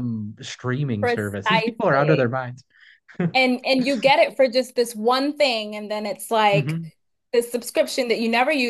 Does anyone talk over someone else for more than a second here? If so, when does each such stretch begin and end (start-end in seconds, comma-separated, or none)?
1.0-2.3